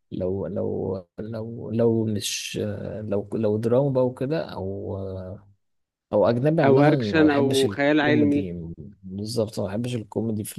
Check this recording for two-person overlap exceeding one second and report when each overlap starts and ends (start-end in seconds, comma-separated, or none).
6.7-8.5